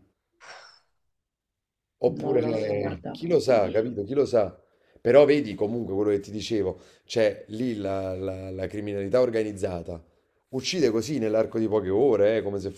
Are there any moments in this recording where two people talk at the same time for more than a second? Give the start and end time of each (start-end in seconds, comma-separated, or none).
2.2-3.8